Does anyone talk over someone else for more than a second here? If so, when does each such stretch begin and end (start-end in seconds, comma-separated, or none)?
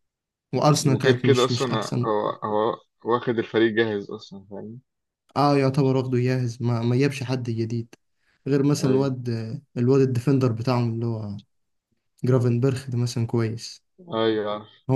0.8-2.1